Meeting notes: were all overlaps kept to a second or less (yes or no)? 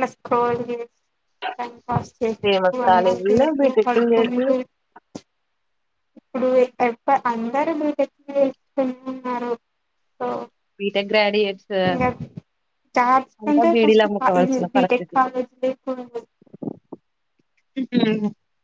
no